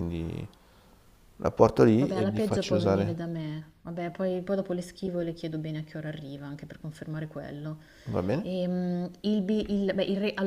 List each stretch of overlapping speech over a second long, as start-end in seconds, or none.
2.0-3.3